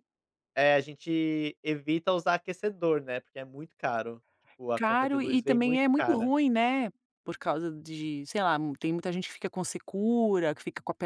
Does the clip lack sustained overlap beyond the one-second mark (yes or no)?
no